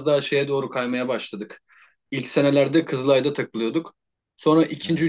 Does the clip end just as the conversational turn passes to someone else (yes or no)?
no